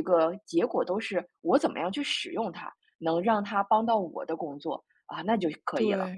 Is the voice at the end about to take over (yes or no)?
yes